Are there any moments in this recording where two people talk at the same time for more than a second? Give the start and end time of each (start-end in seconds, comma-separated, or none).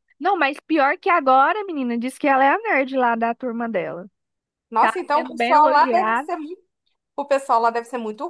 4.8-6.3